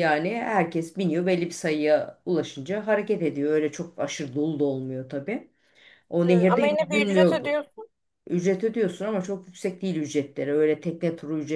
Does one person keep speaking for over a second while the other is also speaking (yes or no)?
yes